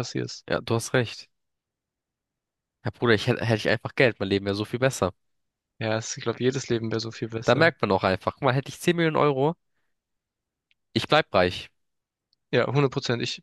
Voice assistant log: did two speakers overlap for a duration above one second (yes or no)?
no